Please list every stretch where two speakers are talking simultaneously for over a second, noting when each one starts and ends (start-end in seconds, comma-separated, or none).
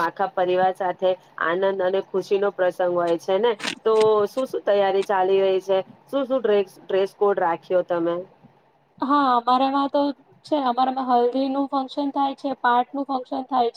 none